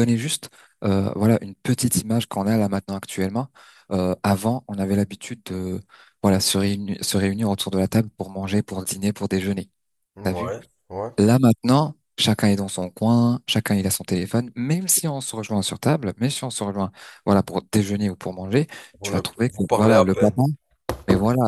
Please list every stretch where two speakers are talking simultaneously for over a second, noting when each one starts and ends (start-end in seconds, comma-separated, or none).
19.0-20.4